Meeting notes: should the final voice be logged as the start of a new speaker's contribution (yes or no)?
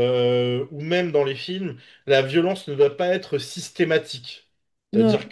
no